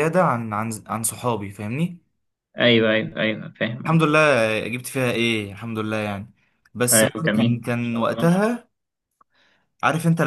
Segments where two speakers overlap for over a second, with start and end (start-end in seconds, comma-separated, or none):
6.9-8.3